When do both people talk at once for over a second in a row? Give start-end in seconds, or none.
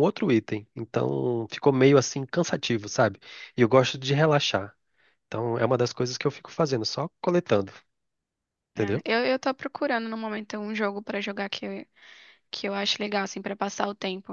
none